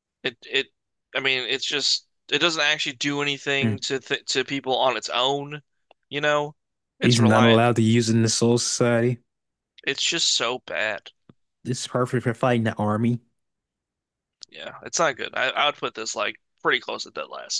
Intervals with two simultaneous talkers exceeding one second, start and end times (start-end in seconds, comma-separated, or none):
none